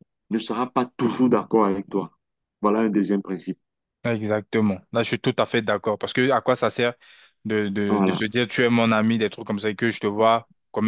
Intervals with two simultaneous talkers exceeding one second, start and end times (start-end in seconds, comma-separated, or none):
none